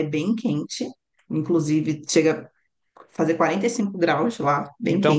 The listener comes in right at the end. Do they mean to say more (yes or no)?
yes